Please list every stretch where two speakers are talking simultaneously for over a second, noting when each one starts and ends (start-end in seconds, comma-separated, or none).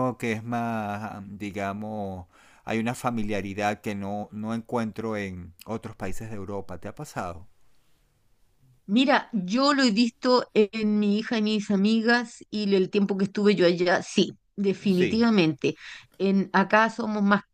none